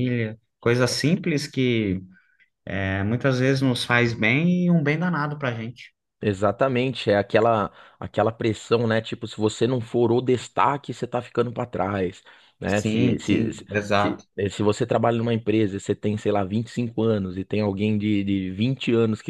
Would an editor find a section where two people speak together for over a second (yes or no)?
yes